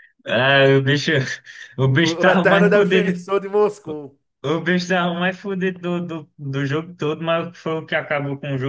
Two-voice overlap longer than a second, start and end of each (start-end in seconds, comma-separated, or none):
1.8-3.1